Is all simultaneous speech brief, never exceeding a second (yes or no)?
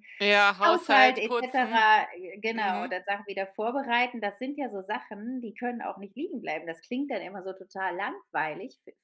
no